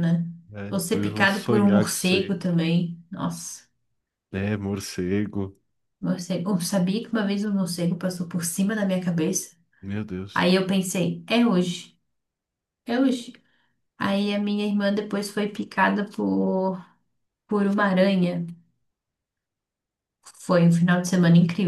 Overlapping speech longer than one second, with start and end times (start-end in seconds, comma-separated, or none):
0.7-2.4